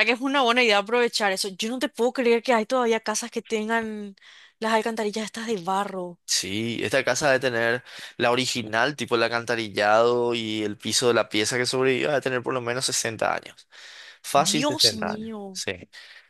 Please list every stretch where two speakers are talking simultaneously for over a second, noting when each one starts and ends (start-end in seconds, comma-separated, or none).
14.3-15.6